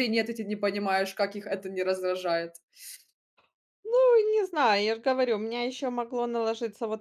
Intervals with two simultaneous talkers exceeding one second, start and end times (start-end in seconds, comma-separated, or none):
none